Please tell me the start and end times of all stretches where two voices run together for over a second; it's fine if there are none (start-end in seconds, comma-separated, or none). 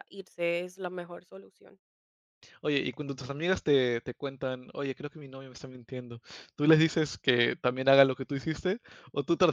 none